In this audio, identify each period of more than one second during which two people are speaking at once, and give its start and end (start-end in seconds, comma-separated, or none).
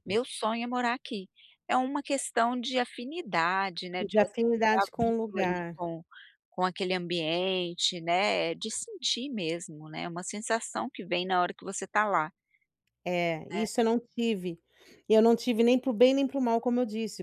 4.0-5.8